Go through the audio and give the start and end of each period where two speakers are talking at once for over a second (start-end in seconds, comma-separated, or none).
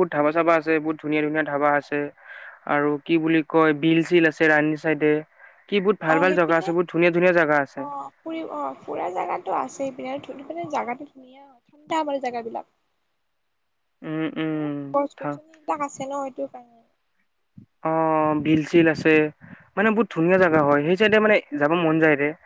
6.1-7.8